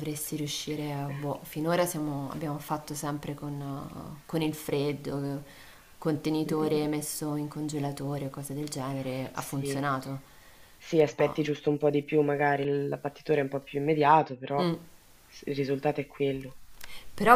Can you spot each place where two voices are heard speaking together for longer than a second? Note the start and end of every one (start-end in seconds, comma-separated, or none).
none